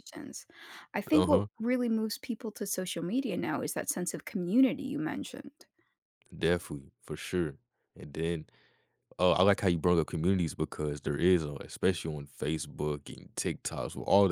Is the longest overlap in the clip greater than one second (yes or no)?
no